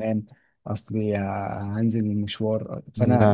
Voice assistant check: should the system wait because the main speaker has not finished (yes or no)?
yes